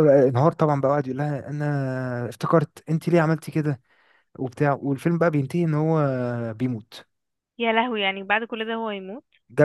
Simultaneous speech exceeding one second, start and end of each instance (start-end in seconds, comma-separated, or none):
none